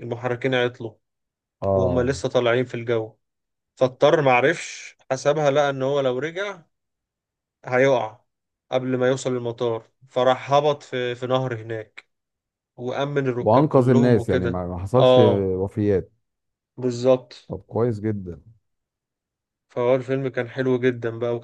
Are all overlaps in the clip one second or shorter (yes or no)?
no